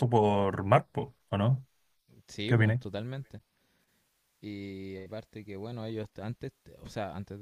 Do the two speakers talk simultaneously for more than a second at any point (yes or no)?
no